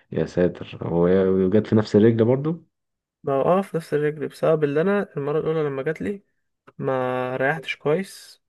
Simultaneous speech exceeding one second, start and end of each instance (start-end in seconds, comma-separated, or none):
none